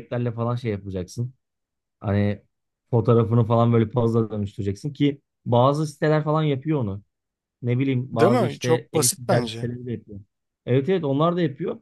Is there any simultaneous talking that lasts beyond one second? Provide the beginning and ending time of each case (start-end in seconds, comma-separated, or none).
8.1-9.7